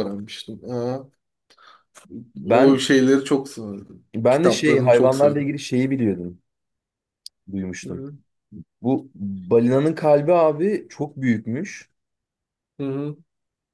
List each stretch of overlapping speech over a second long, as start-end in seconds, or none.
4.2-5.5